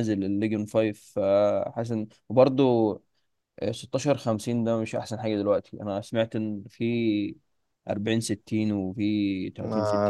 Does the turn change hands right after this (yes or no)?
yes